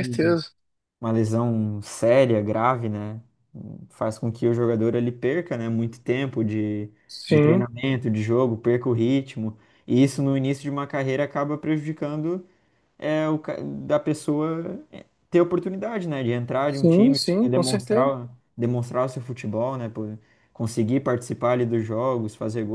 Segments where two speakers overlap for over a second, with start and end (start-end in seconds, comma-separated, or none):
16.7-18.1